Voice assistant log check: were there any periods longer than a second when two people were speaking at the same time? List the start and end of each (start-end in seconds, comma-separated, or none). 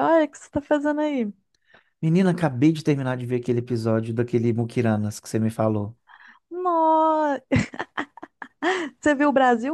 none